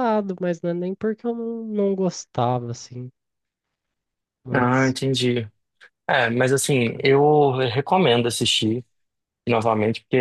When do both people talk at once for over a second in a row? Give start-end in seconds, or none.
none